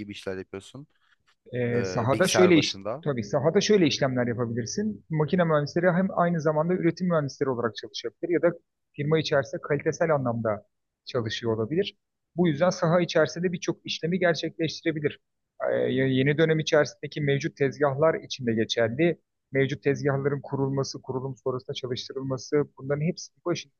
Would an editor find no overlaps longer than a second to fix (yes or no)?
no